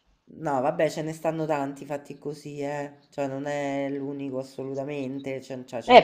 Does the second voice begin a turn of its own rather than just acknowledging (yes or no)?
yes